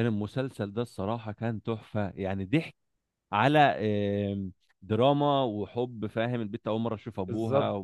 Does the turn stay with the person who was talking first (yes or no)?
yes